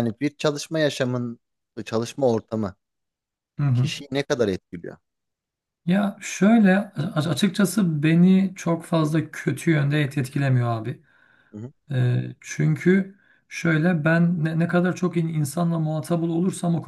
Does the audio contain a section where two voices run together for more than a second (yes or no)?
no